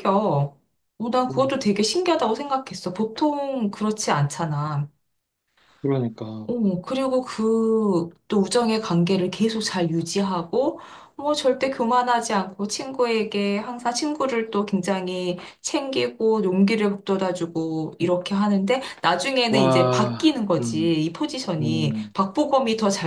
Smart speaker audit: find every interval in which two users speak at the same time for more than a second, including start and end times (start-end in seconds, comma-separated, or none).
19.5-20.9